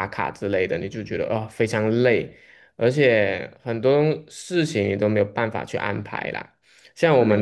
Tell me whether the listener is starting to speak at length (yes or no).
no